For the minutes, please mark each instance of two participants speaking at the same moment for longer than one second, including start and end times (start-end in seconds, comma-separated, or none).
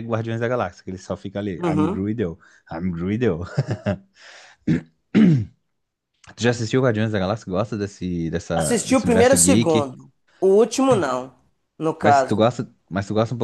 8.5-9.9